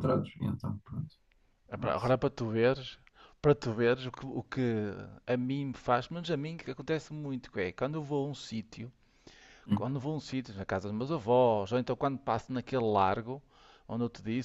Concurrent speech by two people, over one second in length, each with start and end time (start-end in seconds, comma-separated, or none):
none